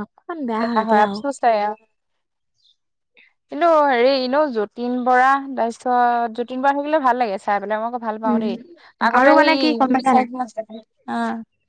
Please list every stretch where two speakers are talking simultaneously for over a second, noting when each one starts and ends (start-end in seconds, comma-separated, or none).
none